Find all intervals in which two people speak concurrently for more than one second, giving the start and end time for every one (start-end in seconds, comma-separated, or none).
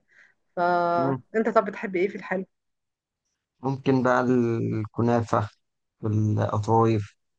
none